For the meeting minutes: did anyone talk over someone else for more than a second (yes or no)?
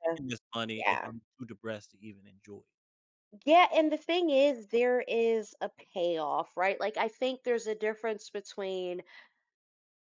no